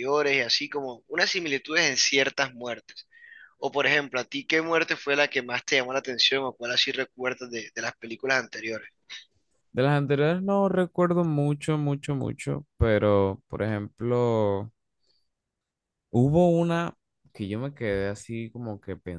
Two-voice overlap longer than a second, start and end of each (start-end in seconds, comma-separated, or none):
none